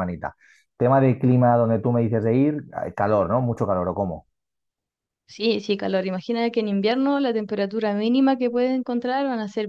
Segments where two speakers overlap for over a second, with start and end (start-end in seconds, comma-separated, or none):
none